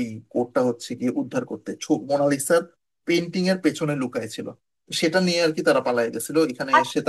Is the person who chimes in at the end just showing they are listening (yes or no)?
no